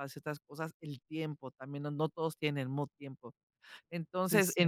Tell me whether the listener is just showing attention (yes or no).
yes